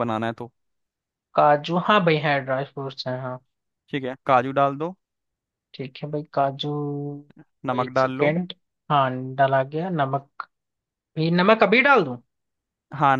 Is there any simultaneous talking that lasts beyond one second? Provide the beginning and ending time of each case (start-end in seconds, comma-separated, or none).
none